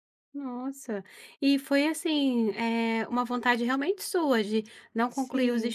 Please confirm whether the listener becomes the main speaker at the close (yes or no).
no